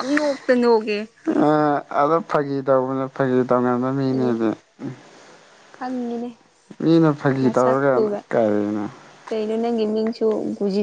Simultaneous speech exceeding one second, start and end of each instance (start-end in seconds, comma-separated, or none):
none